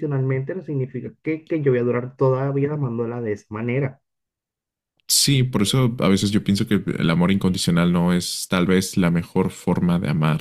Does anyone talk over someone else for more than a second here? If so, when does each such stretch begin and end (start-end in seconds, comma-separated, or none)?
none